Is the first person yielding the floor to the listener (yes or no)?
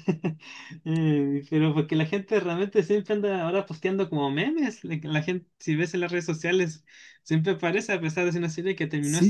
yes